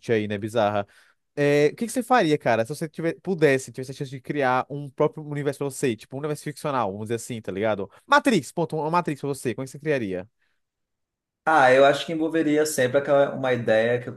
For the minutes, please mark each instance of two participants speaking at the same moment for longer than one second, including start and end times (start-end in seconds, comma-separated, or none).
none